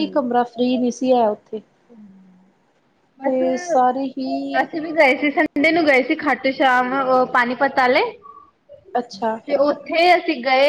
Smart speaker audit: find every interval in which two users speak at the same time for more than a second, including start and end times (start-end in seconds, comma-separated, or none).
none